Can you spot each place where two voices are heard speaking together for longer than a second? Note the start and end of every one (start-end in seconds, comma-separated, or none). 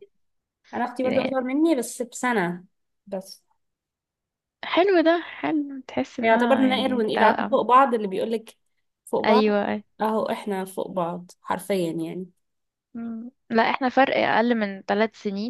6.2-7.6